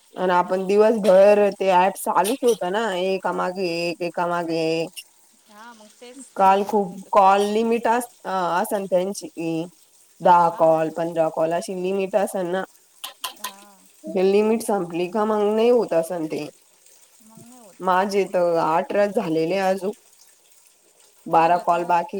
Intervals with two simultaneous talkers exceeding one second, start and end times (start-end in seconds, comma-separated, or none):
6.4-7.8